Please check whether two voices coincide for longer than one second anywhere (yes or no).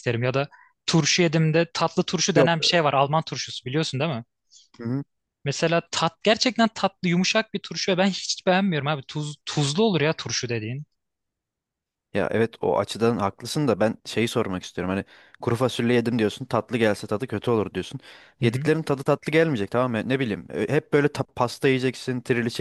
no